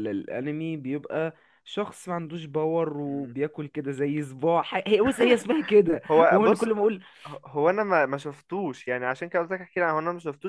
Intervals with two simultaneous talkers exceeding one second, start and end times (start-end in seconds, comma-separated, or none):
none